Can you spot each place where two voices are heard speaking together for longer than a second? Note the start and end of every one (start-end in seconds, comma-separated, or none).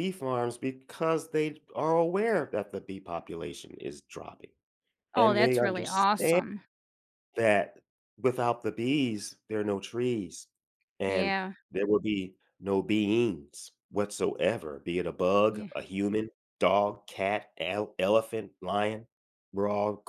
5.2-6.4